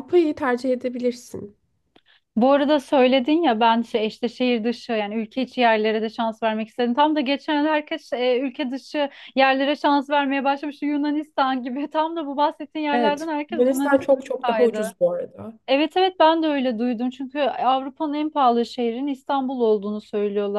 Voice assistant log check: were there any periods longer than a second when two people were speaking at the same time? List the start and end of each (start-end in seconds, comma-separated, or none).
12.9-14.9